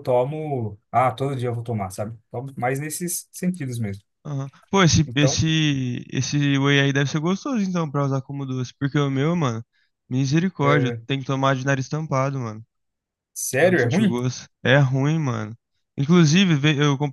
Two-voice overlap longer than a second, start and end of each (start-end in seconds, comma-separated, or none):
none